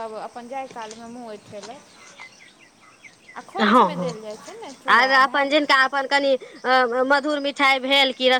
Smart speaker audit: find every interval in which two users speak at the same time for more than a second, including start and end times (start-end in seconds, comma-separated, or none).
none